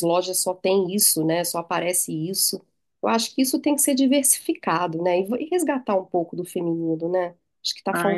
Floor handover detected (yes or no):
yes